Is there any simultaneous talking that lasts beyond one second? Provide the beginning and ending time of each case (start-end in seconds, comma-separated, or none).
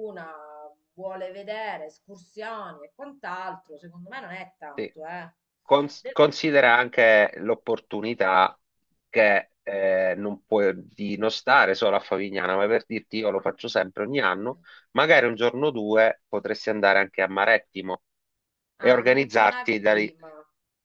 18.8-20.1